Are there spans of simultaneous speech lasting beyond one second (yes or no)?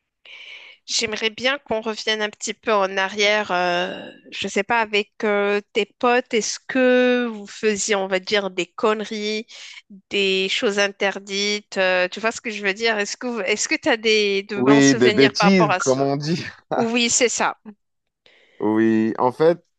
yes